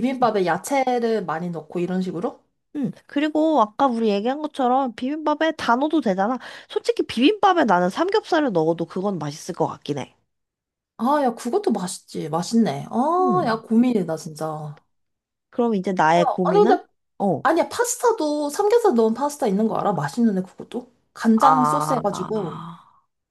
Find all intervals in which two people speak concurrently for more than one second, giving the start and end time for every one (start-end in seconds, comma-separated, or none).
21.4-22.6